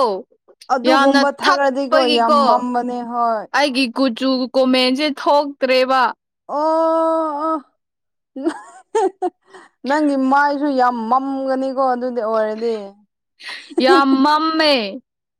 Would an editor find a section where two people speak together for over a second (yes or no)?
yes